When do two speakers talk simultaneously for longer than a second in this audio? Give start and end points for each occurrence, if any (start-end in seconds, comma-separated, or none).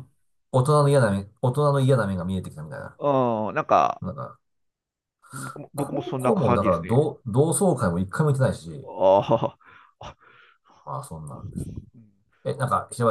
5.7-7.1